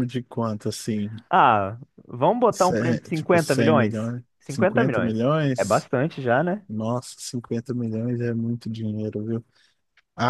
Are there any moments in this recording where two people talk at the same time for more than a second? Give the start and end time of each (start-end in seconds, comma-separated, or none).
2.5-5.9